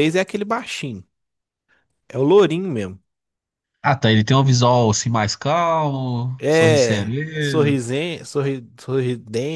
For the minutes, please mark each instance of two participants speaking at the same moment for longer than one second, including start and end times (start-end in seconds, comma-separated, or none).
6.4-7.8